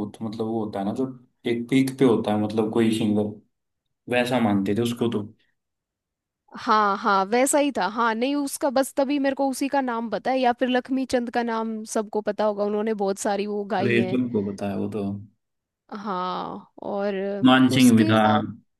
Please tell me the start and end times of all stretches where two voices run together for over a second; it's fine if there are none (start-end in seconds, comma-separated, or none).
none